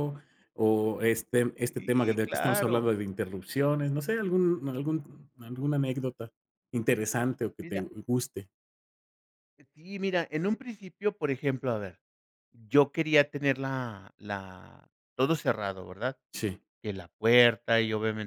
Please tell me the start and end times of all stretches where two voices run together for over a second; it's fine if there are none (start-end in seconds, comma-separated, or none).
1.6-2.9